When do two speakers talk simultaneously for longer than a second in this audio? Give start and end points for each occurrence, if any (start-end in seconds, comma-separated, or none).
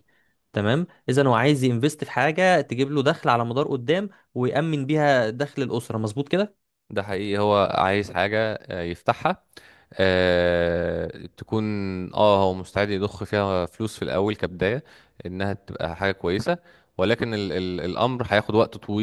none